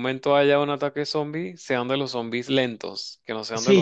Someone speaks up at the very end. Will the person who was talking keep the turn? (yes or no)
no